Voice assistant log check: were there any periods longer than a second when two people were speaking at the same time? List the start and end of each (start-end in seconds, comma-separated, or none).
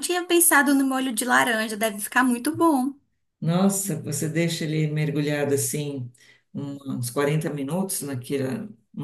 none